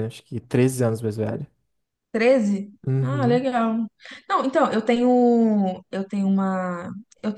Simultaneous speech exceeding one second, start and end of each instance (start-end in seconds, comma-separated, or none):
none